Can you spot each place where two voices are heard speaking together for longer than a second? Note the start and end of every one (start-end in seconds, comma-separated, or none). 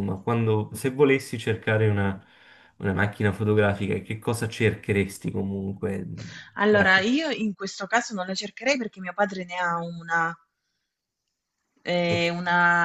none